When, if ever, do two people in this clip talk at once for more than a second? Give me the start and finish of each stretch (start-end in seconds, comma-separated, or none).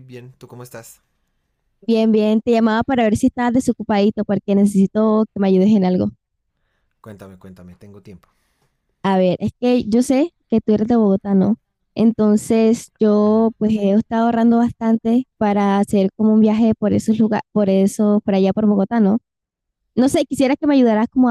none